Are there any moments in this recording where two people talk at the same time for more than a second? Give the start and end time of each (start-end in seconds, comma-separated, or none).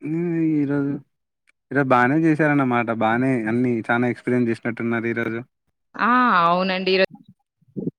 none